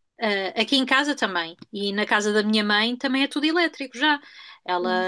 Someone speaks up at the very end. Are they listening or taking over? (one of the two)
listening